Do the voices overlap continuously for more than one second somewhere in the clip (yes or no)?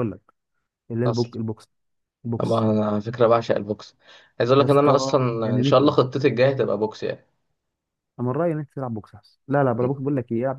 yes